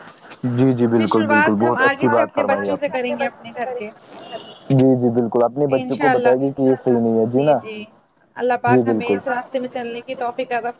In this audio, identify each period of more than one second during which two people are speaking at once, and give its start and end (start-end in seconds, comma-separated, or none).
0.9-3.0